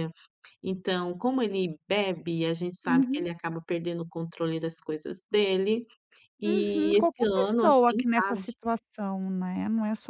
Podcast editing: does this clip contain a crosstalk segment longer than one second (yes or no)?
yes